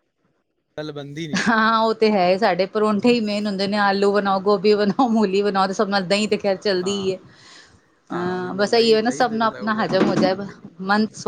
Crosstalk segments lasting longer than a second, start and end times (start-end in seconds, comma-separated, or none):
8.2-10.3